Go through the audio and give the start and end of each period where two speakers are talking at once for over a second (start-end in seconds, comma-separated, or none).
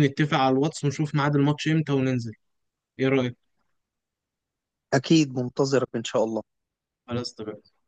none